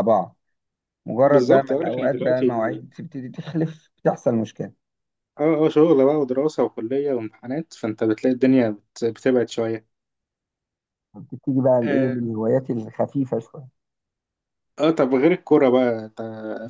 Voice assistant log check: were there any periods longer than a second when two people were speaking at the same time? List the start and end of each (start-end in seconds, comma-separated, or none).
1.2-2.5